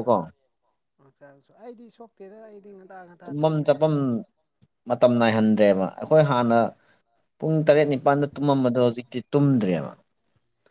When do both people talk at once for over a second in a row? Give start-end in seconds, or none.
none